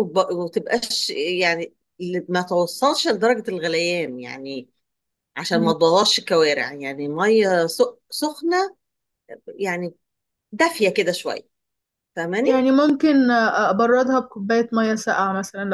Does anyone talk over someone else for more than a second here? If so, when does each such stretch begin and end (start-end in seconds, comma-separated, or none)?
none